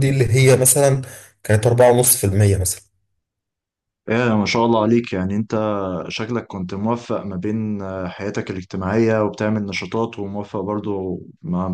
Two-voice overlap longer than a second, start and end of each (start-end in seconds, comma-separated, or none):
none